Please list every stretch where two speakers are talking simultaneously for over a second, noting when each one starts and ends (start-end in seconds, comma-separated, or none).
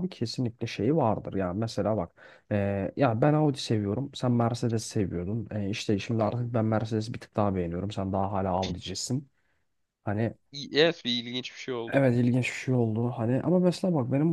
none